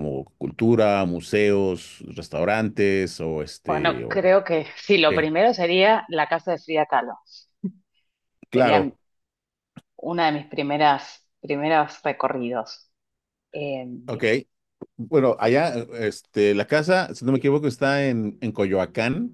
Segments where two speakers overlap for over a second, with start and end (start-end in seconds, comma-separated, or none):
none